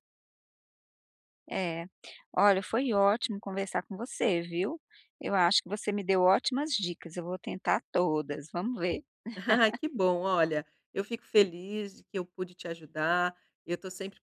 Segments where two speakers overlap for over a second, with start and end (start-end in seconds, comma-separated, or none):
none